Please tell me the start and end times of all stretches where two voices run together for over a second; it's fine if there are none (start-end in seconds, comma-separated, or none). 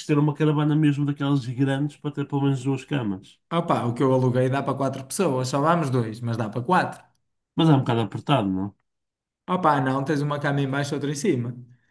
none